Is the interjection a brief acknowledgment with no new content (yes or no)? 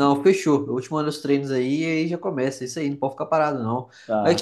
yes